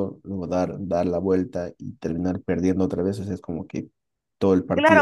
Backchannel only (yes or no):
no